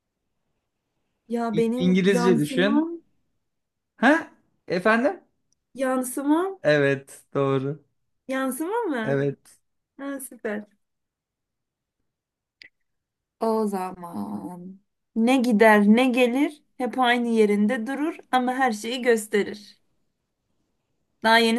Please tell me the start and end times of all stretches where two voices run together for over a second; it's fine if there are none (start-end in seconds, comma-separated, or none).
1.5-2.9